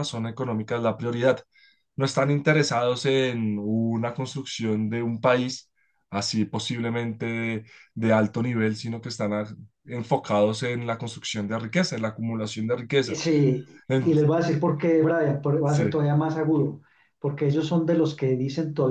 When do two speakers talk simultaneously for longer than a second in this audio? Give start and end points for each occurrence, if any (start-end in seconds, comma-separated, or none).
none